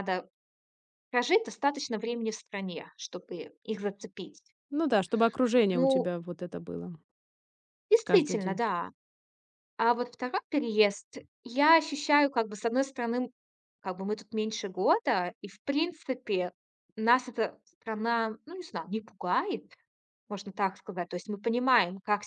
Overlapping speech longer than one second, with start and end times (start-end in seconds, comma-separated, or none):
none